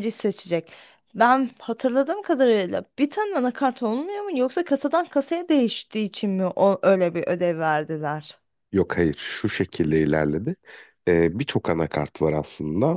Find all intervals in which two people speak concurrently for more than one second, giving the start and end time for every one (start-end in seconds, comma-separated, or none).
none